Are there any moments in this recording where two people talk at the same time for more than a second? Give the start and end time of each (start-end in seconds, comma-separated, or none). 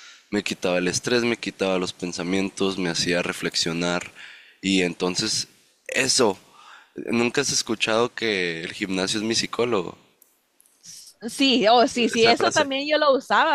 none